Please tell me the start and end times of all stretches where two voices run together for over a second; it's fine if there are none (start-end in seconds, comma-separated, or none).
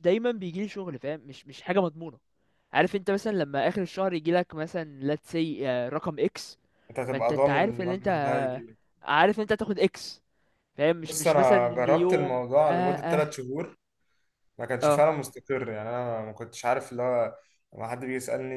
7.1-8.4, 11.0-13.3